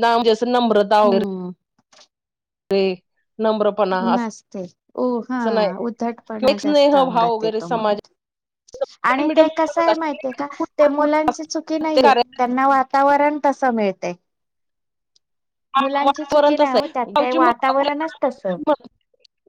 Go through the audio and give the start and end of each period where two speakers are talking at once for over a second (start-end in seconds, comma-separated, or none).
6.4-8.0, 16.1-18.0